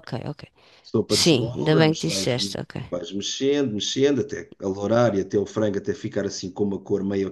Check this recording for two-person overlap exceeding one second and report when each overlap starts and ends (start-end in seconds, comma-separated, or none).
1.1-2.4